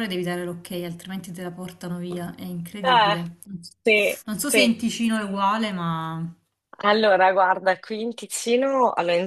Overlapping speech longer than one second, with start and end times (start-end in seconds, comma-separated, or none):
none